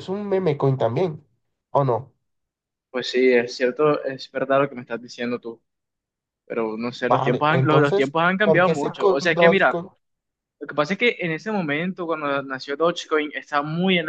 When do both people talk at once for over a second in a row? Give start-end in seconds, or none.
7.1-9.8